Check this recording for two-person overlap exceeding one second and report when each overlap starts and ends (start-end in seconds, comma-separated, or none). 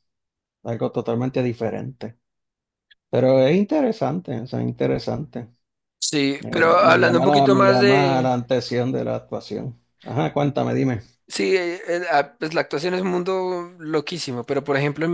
6.4-8.4